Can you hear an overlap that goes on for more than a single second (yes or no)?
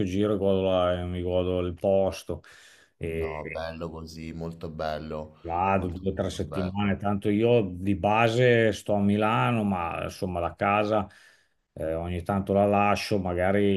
yes